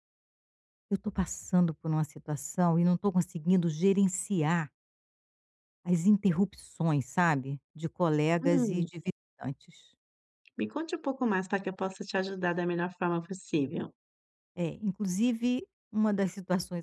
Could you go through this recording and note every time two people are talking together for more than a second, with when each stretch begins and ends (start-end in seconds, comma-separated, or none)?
none